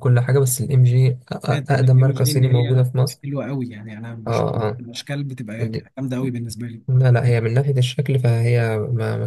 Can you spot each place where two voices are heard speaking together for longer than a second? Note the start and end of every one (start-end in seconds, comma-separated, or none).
1.5-2.9